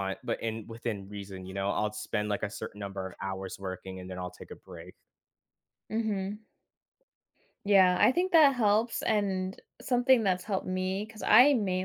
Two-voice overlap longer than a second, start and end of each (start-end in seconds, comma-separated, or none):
none